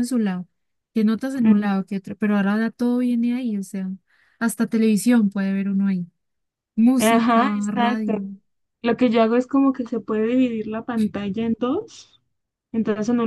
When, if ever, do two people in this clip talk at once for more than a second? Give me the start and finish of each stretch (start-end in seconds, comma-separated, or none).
7.0-8.2